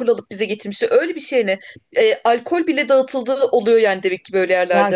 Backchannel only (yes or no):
no